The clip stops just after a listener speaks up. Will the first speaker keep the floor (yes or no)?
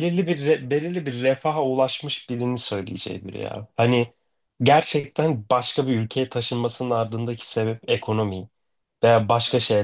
yes